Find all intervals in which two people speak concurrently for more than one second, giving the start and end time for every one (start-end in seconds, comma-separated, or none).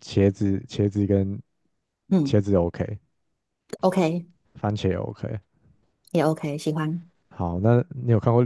none